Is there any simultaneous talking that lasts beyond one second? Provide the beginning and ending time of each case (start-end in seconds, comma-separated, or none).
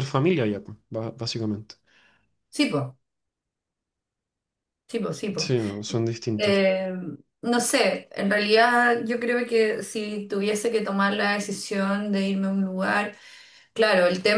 none